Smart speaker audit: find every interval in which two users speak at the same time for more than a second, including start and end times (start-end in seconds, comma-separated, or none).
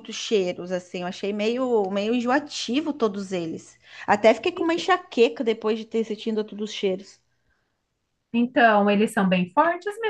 none